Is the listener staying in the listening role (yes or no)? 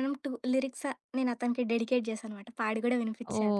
no